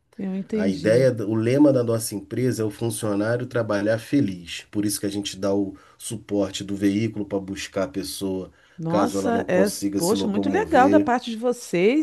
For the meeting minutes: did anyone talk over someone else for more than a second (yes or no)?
yes